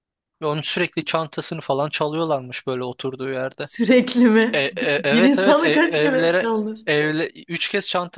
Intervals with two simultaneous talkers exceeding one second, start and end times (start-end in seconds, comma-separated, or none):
4.5-6.5